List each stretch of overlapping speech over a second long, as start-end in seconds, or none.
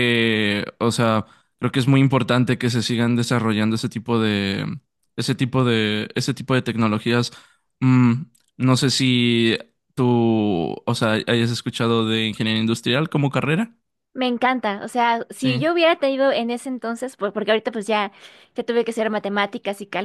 none